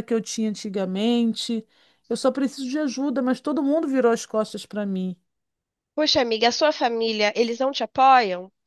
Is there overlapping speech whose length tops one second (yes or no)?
no